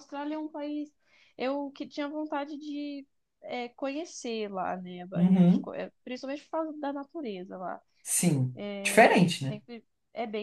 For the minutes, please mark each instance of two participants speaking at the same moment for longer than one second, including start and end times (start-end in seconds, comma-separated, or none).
none